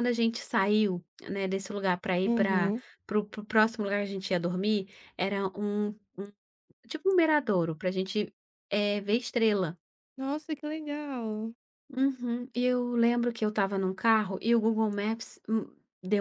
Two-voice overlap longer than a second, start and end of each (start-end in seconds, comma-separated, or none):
none